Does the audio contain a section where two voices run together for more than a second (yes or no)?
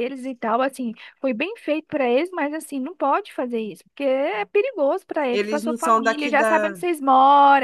yes